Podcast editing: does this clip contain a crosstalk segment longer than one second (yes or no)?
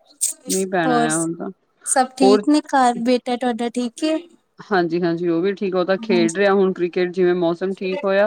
no